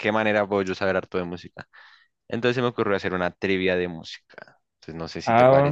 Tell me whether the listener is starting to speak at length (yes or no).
yes